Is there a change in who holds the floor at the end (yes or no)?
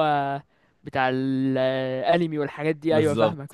yes